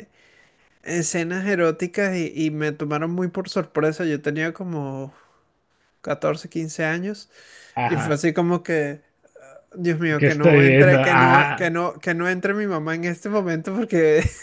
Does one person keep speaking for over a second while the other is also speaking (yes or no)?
yes